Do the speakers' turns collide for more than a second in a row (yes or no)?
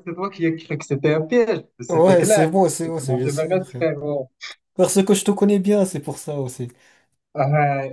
yes